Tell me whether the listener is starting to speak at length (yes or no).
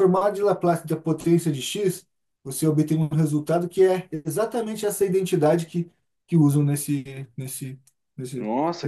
yes